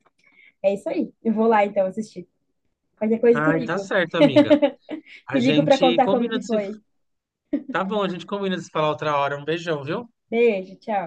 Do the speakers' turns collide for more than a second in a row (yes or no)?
yes